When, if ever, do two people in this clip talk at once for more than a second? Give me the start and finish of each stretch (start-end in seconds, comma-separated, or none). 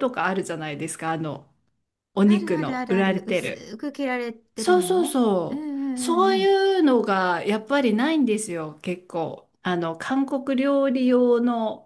2.3-3.7, 4.5-6.5